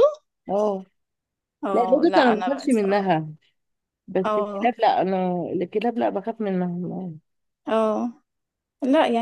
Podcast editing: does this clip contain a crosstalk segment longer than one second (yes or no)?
yes